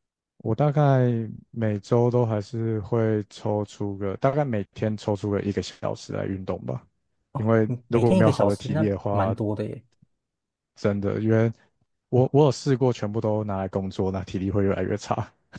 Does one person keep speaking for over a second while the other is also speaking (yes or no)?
yes